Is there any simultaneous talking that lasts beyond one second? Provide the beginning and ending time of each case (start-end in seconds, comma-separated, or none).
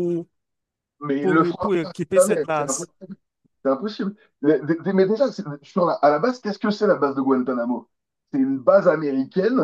1.2-2.9